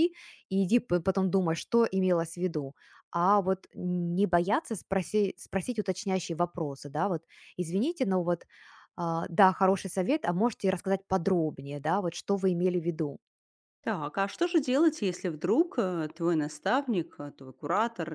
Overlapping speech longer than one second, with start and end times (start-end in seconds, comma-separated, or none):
none